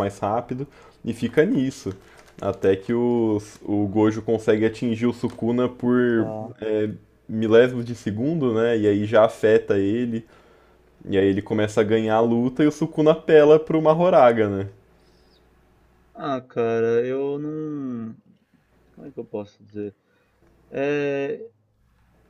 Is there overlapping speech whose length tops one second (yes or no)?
no